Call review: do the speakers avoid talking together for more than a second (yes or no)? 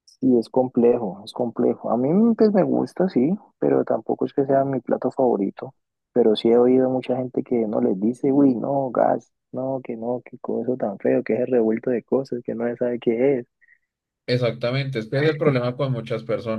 yes